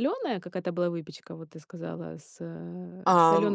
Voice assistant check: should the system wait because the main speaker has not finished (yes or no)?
no